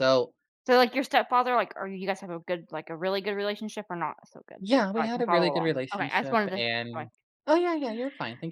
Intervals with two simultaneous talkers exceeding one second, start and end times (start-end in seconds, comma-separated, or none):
4.6-7.1